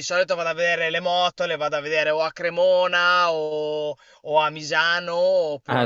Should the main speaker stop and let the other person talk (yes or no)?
yes